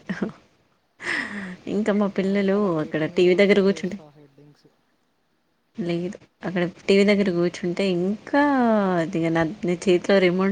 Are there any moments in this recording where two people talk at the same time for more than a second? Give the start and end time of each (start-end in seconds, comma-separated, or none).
2.2-4.0